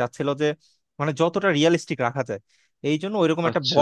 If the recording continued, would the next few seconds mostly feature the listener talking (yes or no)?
no